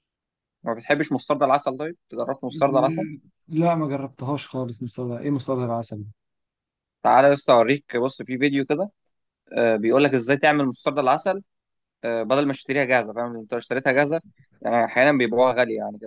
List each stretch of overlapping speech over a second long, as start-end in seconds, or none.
none